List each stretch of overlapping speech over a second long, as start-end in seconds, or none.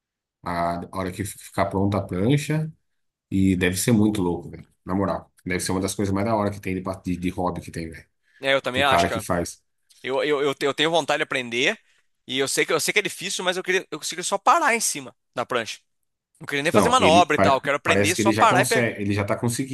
16.7-18.9